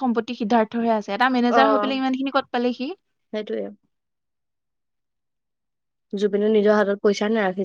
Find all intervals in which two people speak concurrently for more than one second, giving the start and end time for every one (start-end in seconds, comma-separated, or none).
none